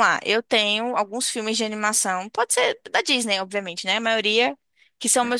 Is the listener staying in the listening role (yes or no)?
yes